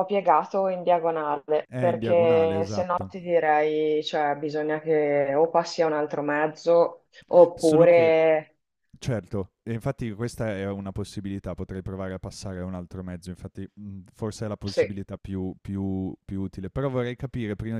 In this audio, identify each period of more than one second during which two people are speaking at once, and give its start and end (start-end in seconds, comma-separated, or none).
1.7-3.1